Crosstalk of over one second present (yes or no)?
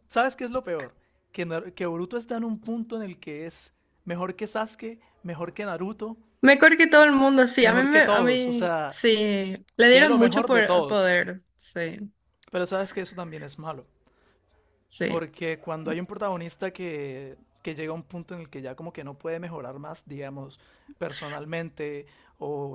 yes